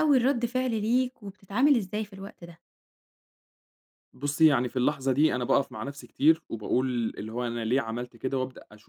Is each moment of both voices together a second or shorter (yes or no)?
yes